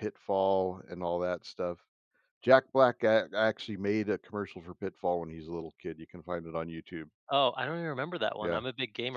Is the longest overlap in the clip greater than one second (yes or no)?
no